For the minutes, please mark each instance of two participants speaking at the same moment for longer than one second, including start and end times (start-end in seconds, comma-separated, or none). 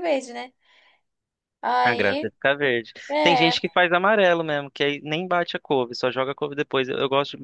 none